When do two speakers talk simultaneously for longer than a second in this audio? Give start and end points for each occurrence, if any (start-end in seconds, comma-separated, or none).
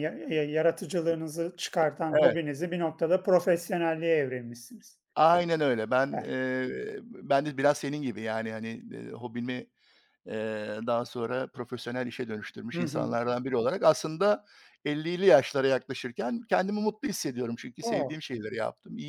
none